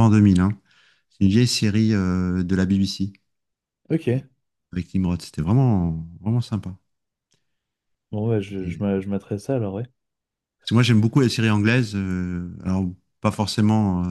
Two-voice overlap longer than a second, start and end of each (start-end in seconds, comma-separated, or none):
none